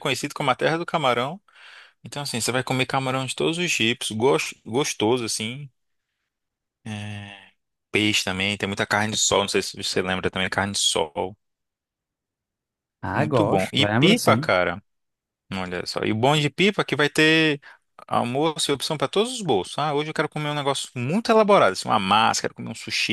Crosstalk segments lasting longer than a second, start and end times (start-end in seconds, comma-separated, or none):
13.1-14.5